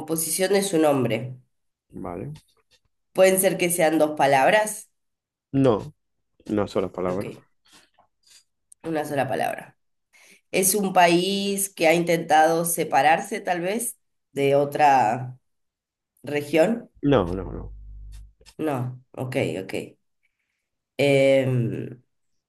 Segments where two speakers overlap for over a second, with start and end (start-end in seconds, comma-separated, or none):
none